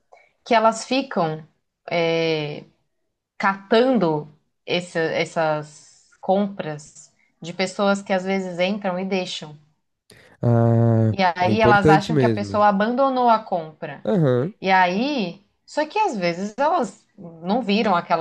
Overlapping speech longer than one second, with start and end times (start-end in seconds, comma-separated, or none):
11.1-12.6